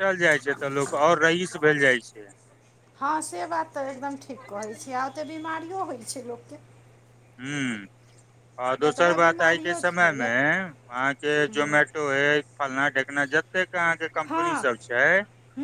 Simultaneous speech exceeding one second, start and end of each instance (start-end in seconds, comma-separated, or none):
8.8-10.4